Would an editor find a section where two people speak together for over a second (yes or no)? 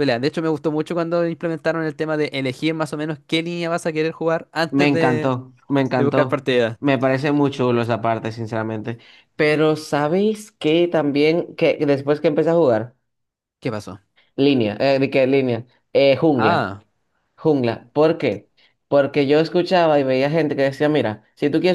no